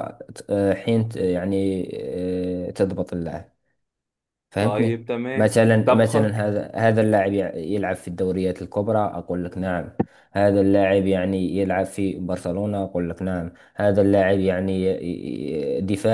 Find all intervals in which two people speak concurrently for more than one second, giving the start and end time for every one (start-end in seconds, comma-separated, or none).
4.6-6.5